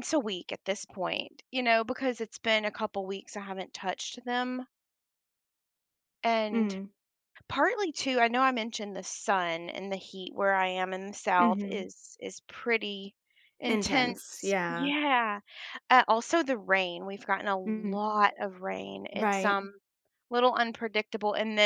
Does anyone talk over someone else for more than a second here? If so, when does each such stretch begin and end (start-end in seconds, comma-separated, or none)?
13.7-14.9